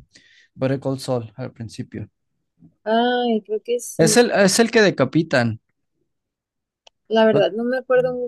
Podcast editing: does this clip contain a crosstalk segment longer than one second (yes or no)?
no